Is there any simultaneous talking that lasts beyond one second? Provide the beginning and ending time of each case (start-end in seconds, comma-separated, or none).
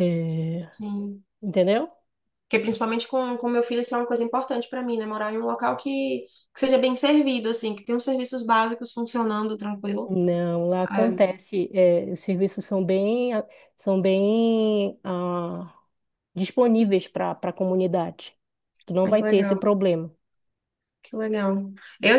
none